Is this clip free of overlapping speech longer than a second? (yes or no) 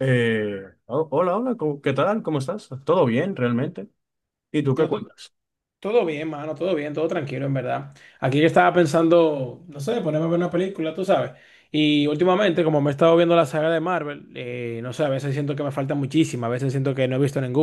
yes